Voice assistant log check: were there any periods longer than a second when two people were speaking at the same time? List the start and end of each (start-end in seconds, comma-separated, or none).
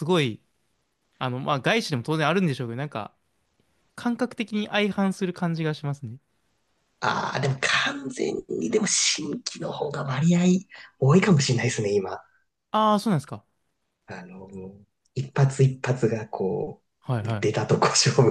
none